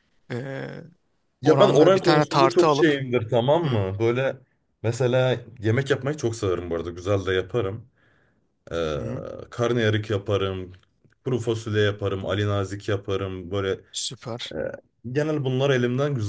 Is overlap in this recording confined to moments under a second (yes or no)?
no